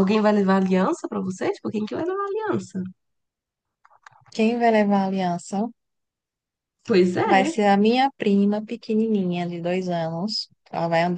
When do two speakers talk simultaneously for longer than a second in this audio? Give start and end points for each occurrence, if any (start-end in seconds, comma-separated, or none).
none